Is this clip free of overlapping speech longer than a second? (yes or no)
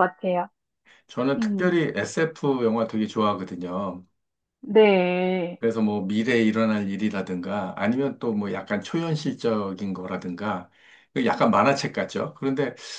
yes